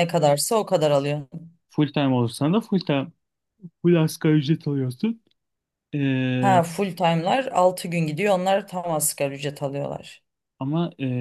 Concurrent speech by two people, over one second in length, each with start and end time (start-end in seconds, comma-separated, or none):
none